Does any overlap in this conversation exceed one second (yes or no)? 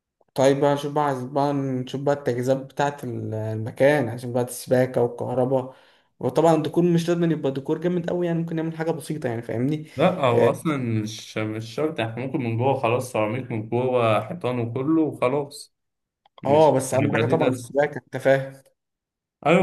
yes